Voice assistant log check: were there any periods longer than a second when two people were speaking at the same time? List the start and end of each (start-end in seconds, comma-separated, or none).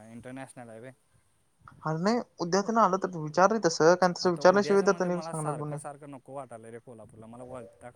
4.2-5.8